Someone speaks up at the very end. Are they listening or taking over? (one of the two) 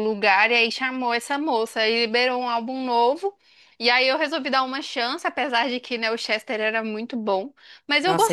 taking over